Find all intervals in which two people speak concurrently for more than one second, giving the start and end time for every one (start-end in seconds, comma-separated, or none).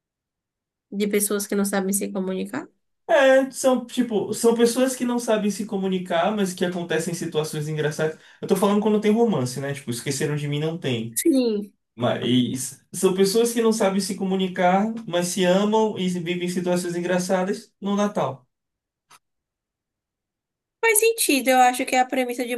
none